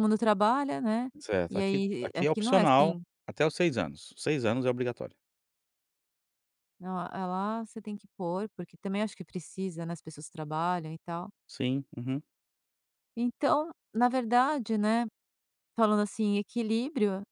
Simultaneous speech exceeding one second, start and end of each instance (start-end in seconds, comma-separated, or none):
1.5-3.0